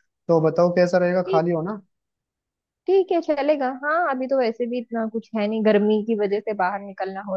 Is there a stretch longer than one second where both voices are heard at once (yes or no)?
no